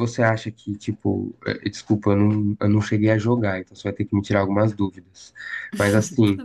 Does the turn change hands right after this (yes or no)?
no